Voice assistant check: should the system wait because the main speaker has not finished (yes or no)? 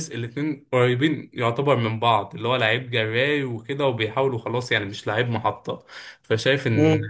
yes